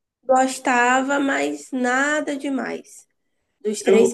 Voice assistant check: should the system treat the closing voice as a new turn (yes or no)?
no